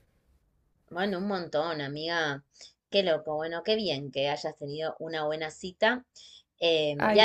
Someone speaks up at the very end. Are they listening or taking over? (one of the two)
listening